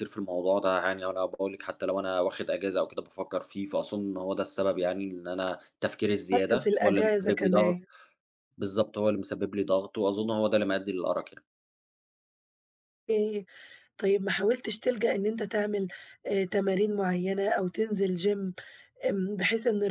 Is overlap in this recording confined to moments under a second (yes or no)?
no